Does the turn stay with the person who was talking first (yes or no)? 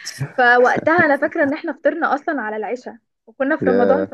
yes